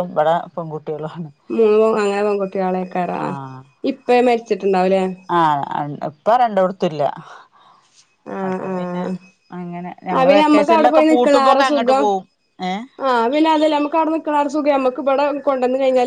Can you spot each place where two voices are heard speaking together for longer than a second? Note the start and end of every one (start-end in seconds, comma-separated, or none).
10.2-12.1